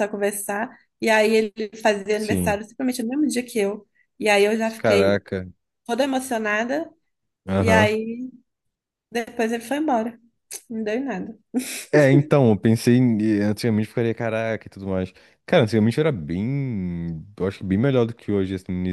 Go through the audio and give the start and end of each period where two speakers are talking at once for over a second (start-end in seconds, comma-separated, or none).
none